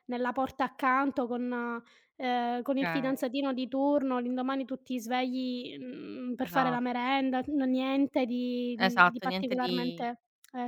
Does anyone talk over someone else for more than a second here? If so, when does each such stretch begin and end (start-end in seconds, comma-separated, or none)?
8.8-10.0